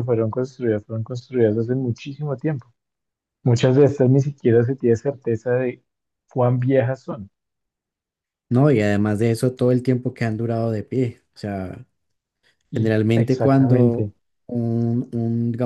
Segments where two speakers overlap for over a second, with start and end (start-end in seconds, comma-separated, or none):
12.7-14.1